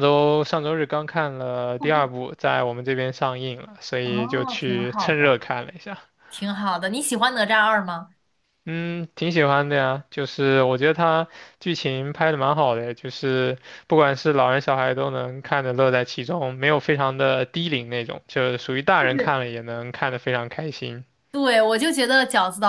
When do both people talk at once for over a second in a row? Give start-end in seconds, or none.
4.0-5.4